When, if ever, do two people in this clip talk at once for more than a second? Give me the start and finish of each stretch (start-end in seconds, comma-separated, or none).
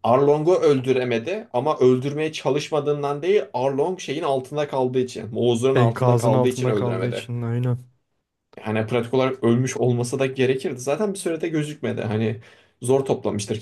5.7-7.3